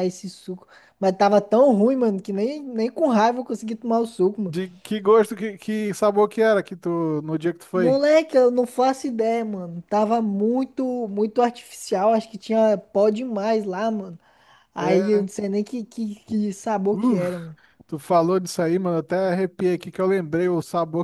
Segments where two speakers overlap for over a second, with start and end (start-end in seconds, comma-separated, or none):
none